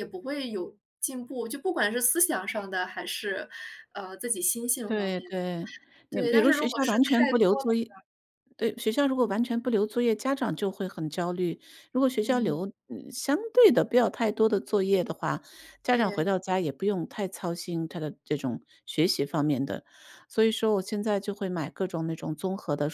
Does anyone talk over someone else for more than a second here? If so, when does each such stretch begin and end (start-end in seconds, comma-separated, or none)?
6.1-7.7